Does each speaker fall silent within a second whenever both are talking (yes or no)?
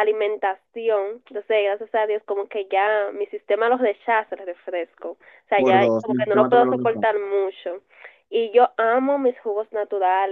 no